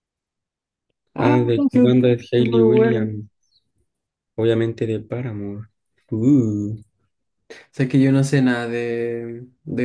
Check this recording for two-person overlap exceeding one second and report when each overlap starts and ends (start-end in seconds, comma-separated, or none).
1.2-3.1